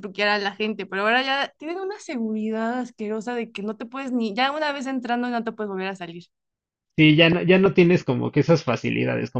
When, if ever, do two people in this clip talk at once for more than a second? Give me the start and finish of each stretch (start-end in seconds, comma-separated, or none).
none